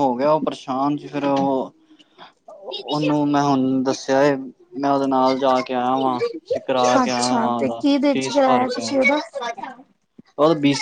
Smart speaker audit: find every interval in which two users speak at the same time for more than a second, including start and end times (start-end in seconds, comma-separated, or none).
7.0-9.0